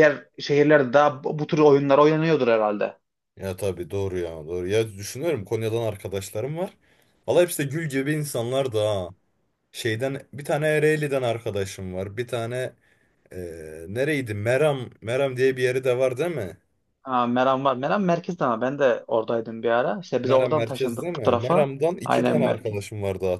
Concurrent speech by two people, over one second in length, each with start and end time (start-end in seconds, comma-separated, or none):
20.2-22.8